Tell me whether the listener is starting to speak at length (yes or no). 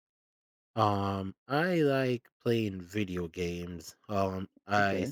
no